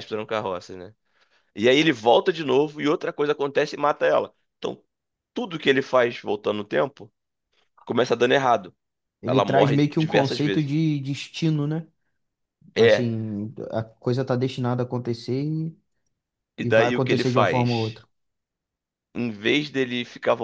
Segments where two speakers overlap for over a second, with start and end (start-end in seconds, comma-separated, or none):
9.2-10.7, 16.6-18.0